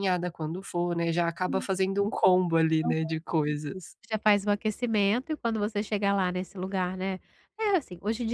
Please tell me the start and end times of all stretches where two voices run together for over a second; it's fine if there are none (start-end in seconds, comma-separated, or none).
none